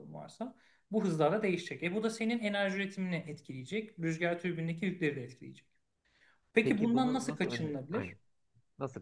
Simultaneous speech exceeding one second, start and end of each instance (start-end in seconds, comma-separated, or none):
6.6-8.1